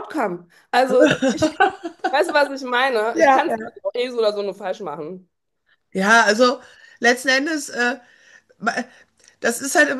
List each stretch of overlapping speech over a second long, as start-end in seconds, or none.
none